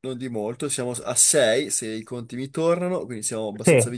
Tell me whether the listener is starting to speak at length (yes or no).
no